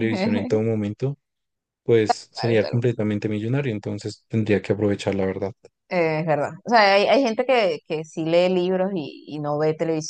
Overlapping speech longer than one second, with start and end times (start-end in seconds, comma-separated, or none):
none